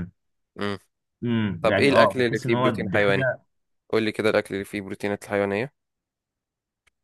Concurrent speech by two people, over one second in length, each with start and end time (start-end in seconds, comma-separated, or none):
1.6-3.3